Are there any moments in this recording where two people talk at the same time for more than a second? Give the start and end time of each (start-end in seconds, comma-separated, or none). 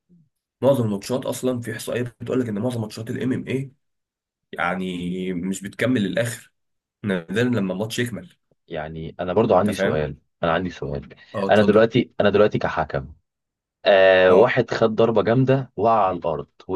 none